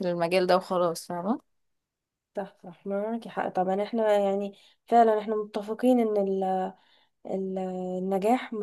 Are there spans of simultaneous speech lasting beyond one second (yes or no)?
no